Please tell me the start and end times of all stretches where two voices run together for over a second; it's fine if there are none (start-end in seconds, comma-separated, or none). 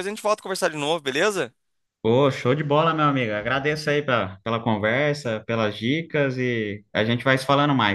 none